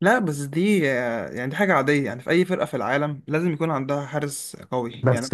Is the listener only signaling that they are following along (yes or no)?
no